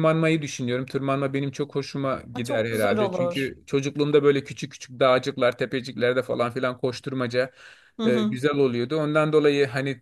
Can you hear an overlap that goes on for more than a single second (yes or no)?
yes